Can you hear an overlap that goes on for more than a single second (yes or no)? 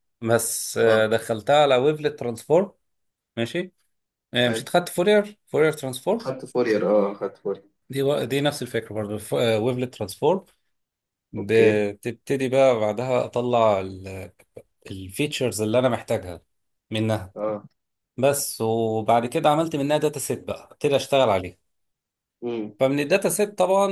no